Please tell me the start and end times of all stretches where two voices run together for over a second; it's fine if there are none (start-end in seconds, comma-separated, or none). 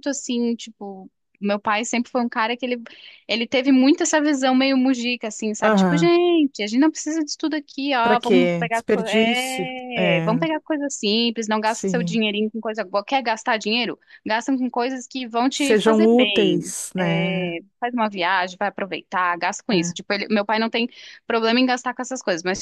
8.0-10.5, 15.5-17.6